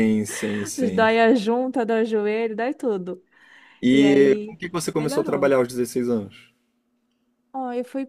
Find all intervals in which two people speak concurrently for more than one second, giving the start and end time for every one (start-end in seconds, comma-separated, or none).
3.9-5.5